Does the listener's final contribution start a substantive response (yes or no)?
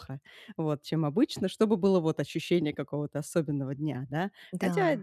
no